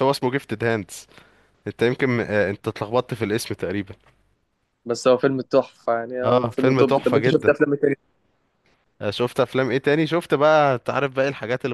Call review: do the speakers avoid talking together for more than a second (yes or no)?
no